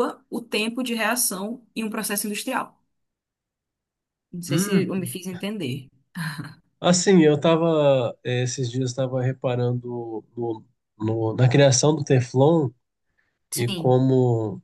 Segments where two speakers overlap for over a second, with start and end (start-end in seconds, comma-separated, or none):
none